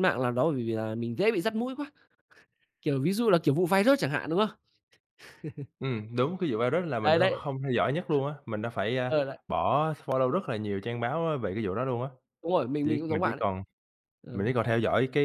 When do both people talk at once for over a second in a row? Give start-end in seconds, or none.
none